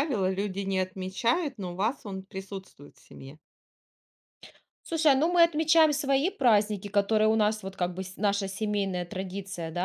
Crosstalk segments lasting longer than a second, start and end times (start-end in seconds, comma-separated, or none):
none